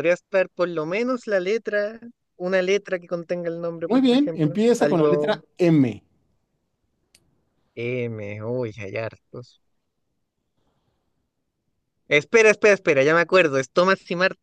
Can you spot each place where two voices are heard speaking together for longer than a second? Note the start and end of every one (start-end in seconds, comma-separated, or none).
3.9-5.4